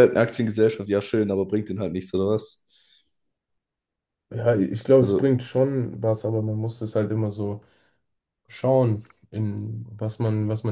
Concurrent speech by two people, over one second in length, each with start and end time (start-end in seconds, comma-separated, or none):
none